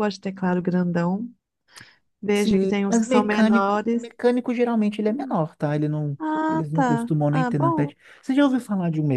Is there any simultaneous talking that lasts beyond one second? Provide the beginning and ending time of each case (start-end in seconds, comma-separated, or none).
2.3-4.1, 6.2-7.9